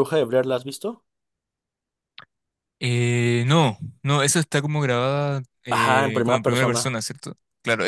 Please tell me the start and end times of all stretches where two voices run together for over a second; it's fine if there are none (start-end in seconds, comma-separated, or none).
5.7-6.9